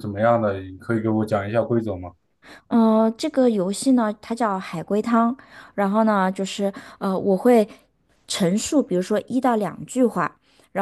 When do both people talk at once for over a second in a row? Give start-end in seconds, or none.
none